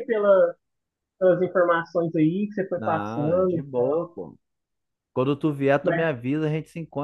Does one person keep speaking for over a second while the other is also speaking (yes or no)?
yes